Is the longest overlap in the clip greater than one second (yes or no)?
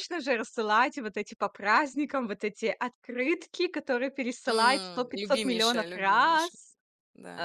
yes